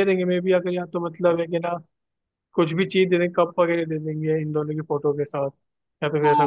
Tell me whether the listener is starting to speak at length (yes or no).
yes